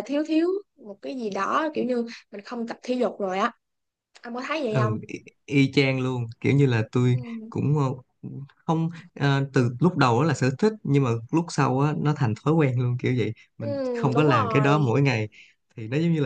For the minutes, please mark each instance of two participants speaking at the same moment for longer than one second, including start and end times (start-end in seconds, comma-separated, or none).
13.6-14.9